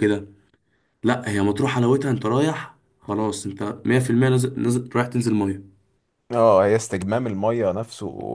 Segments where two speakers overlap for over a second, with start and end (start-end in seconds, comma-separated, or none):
none